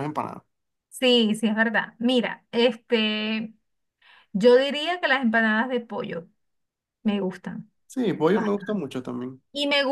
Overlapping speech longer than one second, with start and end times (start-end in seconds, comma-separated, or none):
none